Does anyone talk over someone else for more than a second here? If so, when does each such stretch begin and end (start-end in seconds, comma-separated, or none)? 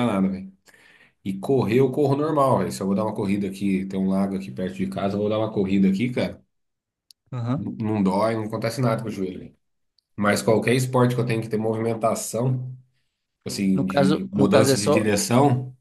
13.7-15.1